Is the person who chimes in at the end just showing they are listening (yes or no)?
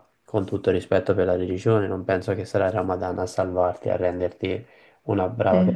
yes